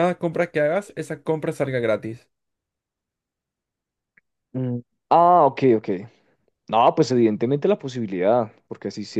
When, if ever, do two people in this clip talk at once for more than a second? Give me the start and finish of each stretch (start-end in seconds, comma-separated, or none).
none